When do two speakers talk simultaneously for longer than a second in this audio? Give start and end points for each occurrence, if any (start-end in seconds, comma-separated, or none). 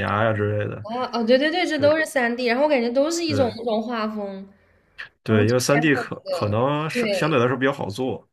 5.3-7.4